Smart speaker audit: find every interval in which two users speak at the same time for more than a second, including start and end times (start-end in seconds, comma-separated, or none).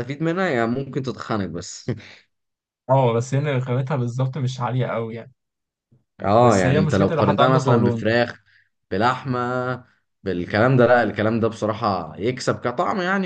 6.4-8.1